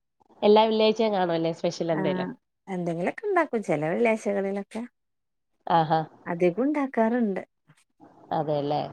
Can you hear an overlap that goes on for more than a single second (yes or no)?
no